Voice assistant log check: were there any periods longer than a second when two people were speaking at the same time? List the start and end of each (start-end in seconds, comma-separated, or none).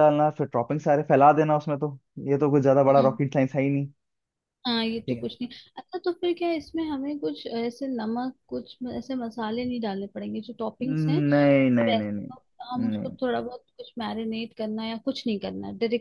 10.8-12.3